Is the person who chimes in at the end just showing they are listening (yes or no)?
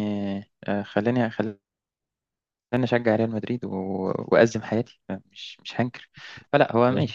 yes